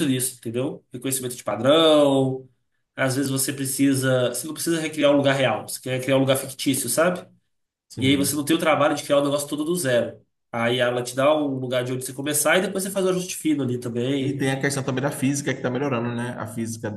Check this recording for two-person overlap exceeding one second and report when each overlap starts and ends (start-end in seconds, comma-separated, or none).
none